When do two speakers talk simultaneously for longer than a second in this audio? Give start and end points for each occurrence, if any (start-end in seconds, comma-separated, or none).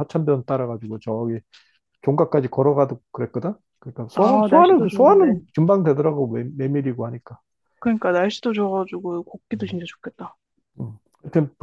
4.1-5.4